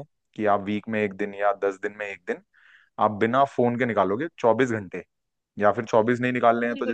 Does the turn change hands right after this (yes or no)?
yes